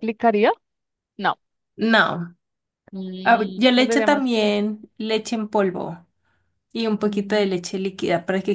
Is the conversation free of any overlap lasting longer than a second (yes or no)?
no